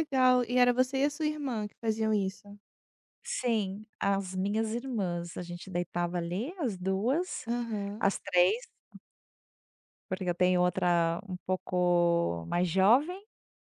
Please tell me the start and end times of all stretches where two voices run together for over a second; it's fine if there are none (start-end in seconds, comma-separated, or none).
none